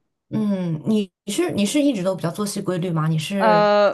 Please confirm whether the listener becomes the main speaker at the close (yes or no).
yes